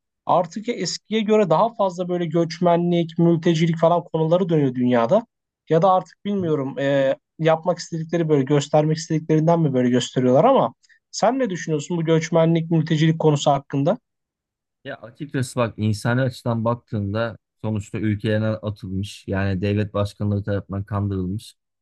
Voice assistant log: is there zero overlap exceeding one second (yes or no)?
yes